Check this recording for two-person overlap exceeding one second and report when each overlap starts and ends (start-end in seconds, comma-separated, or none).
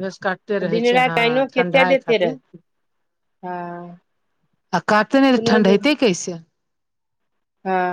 0.7-2.4